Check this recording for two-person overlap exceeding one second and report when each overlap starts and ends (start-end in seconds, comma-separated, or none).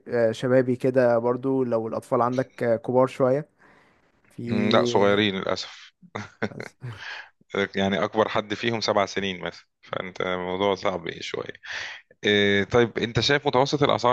none